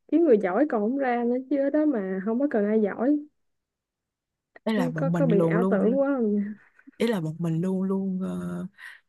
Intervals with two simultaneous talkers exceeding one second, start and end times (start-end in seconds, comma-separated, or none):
4.7-6.0